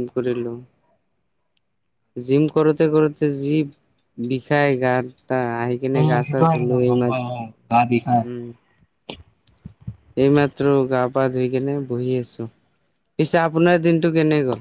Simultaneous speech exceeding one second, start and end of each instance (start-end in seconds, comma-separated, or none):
6.0-8.2